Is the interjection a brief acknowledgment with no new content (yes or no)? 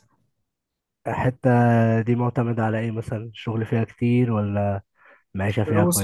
no